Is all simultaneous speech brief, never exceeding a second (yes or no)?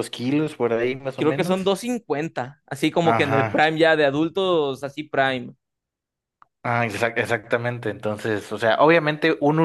yes